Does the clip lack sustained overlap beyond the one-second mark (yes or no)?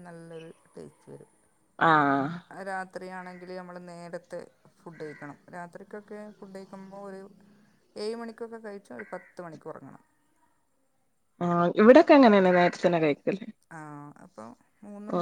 yes